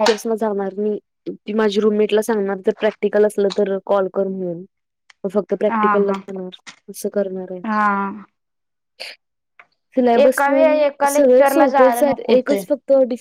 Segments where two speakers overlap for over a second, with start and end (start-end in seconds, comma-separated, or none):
10.2-12.6